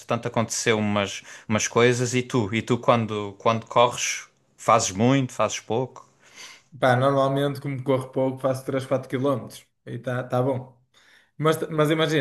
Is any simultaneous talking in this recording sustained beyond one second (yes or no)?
no